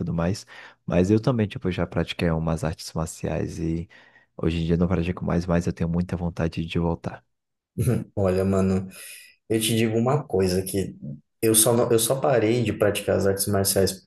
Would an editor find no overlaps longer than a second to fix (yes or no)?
yes